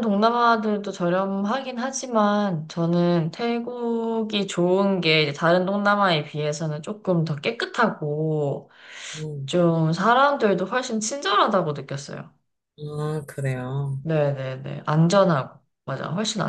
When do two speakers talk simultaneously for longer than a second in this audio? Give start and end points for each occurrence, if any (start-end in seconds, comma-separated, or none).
none